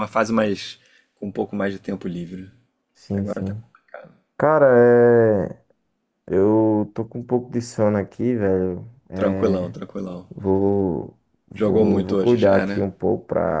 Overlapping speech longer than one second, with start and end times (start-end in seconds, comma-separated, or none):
11.6-12.8